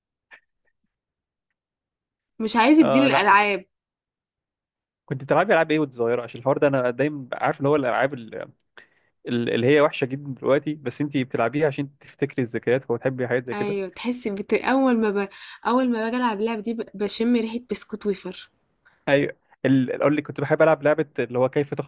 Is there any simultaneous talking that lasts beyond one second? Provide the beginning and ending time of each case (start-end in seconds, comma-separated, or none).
none